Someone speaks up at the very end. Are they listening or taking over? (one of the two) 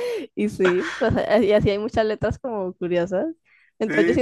listening